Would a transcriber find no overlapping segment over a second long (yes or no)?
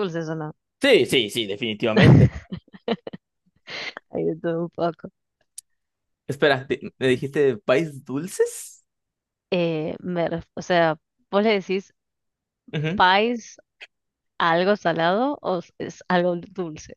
yes